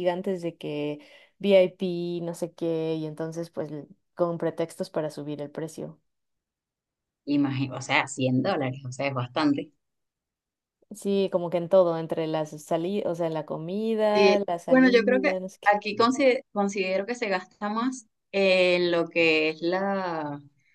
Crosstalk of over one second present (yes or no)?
yes